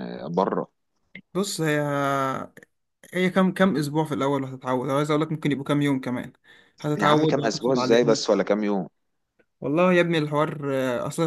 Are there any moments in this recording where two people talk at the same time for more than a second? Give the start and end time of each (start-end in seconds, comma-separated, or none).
7.0-8.2